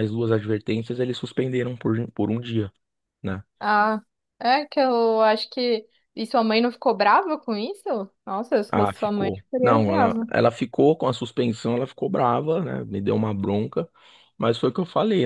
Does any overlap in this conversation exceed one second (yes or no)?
yes